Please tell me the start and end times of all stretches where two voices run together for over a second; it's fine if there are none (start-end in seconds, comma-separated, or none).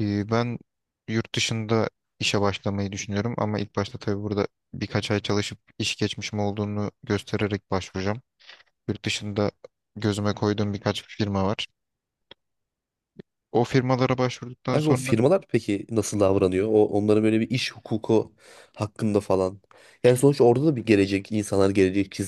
none